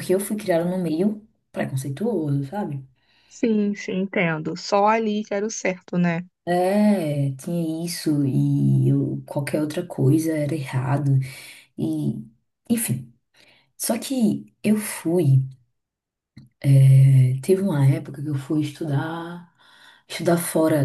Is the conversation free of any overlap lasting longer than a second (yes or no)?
yes